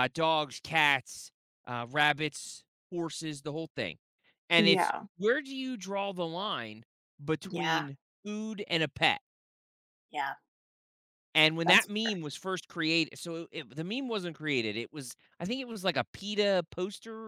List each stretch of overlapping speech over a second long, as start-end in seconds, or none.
none